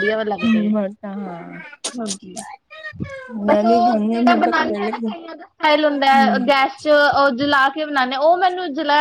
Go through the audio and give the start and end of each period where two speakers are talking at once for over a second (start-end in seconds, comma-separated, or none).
3.5-4.9